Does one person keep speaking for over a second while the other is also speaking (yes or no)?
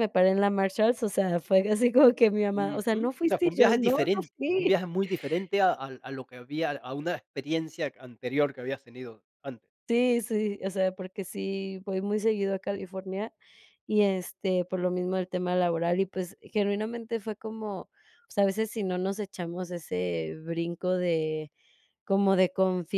yes